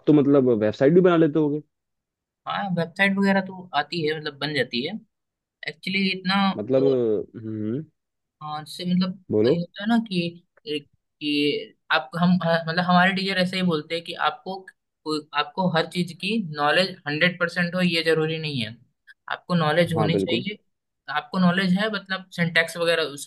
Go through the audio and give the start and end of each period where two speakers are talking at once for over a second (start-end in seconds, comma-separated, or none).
none